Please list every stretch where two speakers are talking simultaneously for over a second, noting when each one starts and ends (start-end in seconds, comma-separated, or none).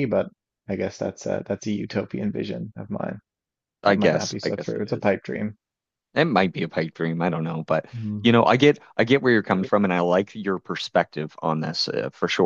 3.9-5.1